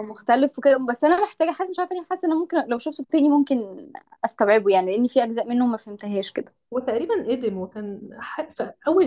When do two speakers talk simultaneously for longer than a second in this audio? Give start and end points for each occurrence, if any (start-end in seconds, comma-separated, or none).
none